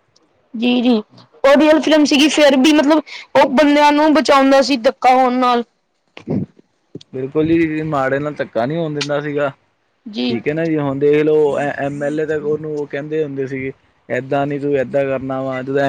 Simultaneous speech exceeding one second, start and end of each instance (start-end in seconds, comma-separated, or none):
none